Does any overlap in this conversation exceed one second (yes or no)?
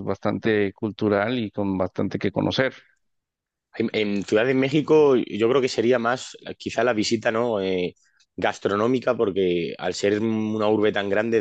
no